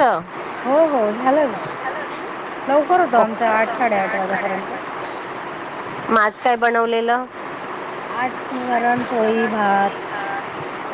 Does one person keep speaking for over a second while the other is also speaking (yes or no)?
yes